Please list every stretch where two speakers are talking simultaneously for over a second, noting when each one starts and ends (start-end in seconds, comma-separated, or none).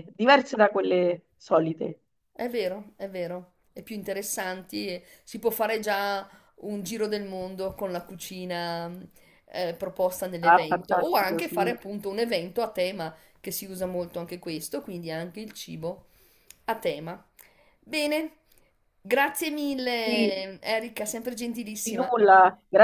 10.4-11.8